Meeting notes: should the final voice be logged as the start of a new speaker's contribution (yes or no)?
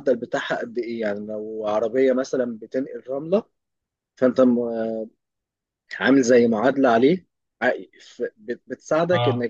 no